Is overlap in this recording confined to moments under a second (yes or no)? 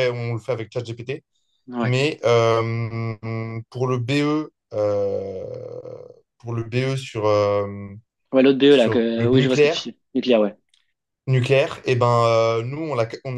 no